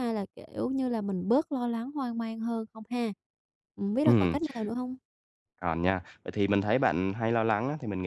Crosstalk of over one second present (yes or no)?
no